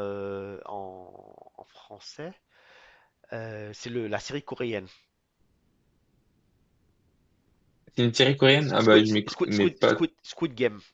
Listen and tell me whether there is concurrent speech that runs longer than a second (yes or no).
yes